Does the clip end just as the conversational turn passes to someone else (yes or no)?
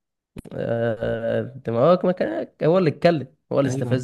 yes